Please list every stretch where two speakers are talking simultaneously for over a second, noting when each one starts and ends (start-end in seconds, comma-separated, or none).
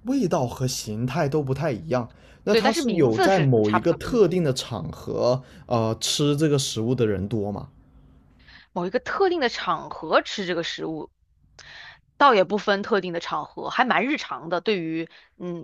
2.5-4.2